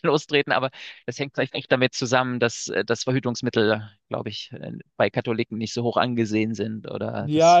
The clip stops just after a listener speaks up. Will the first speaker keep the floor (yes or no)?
no